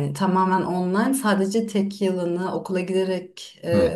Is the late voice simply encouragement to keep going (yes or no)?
yes